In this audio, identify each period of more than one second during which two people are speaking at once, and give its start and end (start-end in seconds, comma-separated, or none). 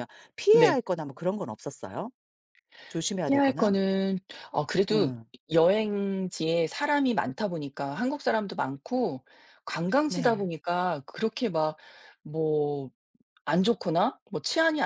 none